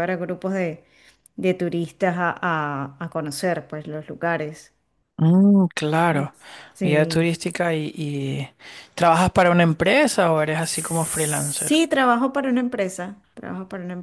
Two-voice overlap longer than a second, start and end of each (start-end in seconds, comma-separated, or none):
10.6-11.8